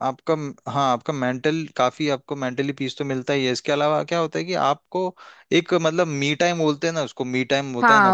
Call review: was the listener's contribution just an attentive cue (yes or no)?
no